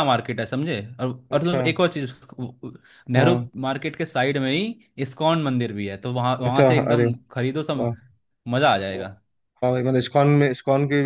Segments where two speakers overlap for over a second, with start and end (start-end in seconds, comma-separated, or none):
none